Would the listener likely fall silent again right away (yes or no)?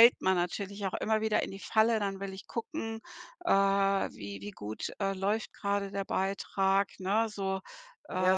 no